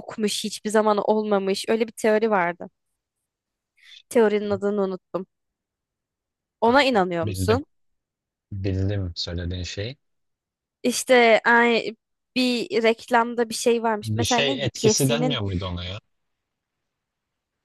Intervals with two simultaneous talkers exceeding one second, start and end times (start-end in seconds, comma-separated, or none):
14.0-15.4